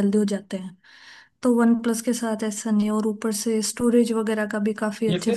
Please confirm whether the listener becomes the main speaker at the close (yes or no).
yes